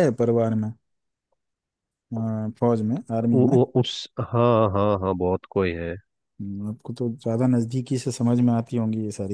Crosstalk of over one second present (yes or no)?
no